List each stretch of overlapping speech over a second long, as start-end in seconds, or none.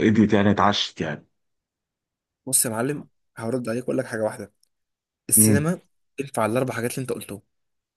none